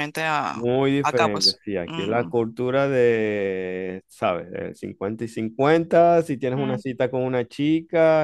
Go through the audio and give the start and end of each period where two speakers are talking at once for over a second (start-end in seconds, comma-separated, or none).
0.5-2.3